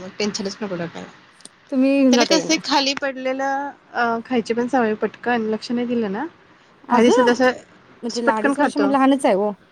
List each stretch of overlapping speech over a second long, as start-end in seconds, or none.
none